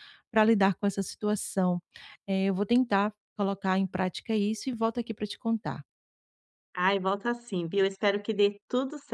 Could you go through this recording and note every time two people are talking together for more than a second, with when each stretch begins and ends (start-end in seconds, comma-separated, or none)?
none